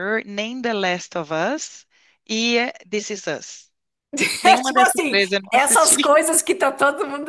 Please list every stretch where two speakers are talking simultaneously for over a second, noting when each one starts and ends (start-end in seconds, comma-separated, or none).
4.4-6.1